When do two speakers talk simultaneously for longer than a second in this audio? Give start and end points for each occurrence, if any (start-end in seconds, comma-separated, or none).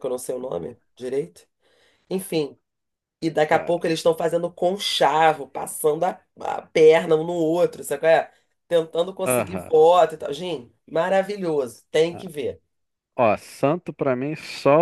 none